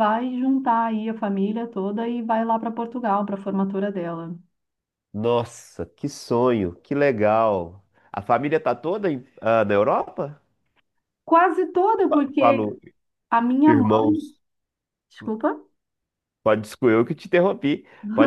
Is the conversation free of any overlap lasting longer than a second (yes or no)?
yes